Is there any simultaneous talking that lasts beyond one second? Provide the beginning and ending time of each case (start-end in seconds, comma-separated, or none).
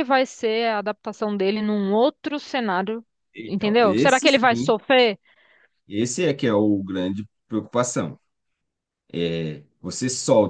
3.5-4.7